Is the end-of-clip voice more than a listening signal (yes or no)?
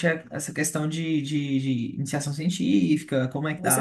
yes